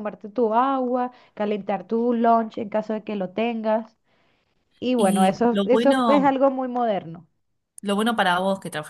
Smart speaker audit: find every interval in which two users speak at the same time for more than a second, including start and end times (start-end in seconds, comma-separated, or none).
5.0-6.4